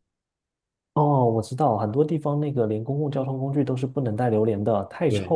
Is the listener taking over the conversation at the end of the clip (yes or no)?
yes